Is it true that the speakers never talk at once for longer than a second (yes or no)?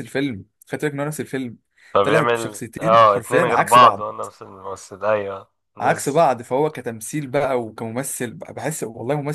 no